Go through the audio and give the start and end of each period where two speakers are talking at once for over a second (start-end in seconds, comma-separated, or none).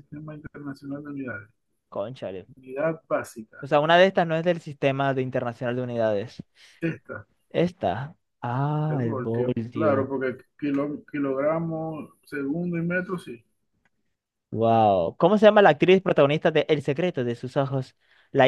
8.9-10.1